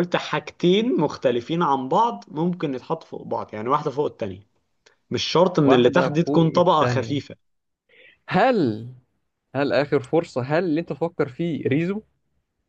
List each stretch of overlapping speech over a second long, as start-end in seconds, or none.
5.6-7.2